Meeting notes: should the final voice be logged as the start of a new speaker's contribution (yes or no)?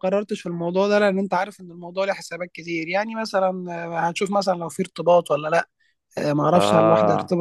no